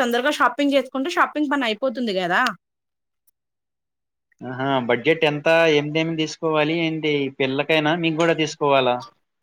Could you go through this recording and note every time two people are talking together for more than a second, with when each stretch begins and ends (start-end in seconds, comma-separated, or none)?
none